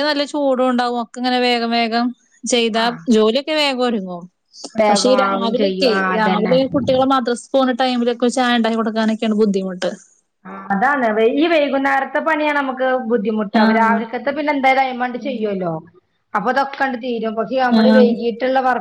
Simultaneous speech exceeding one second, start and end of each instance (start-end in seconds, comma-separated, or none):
4.9-6.5